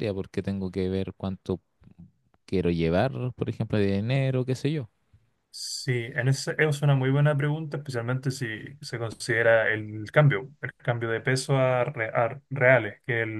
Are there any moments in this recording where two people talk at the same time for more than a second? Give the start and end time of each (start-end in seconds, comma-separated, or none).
none